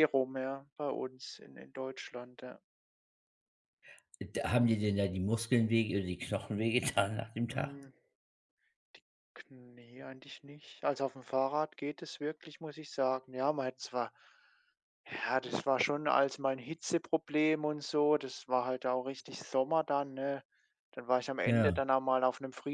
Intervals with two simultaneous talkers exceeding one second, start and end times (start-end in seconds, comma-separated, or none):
none